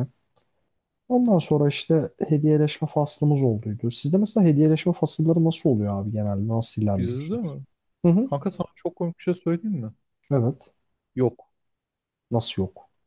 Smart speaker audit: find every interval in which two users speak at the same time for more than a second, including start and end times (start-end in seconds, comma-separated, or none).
none